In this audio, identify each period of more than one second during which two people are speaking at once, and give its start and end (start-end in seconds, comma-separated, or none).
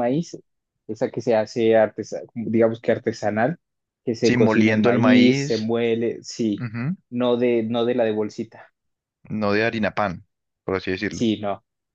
4.2-5.7